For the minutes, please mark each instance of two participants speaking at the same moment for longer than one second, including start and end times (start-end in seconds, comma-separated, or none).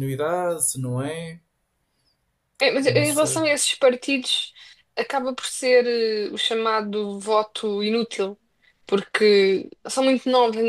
none